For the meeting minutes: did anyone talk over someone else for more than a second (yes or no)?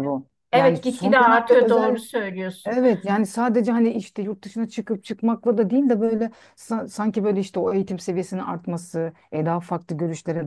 yes